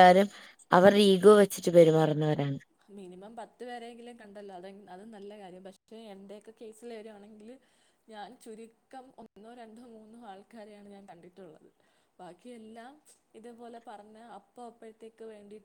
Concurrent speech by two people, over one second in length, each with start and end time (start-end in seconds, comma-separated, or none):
none